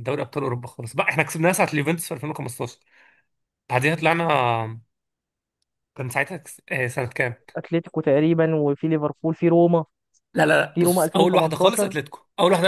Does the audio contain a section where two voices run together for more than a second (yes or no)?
yes